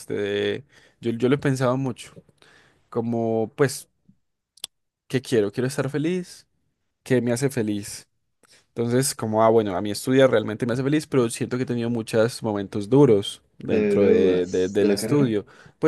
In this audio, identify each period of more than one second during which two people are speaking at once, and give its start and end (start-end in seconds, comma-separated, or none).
13.7-15.3